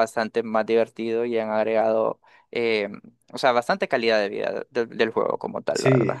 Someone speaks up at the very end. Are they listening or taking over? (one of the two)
taking over